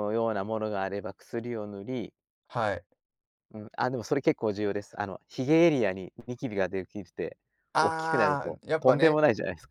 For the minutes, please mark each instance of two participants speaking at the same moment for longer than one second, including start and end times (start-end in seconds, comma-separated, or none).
7.8-9.2